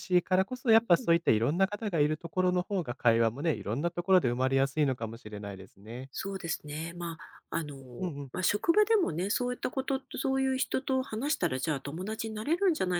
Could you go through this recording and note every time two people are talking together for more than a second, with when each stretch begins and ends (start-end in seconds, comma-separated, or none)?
none